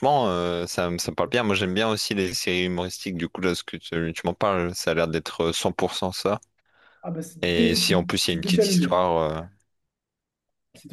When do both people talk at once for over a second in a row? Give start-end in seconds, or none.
7.4-8.9